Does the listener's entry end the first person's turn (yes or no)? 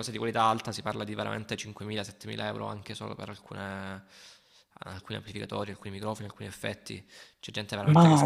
no